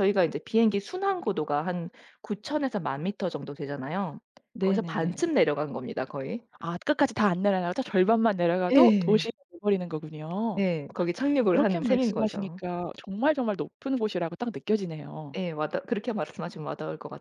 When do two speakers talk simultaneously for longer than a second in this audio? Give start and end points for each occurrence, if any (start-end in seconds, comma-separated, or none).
11.3-12.6